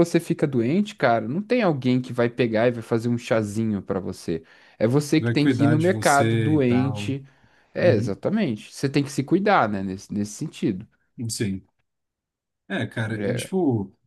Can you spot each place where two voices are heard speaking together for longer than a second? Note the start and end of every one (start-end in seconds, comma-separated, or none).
5.2-7.1